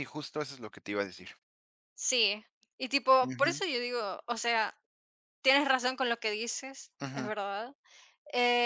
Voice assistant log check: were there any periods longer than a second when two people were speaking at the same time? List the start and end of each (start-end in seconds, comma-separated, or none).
none